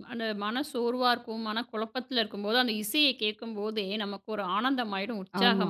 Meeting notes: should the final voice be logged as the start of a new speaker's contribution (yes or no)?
yes